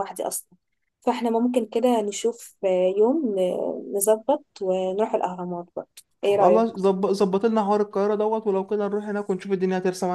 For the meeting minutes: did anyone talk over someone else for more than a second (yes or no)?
no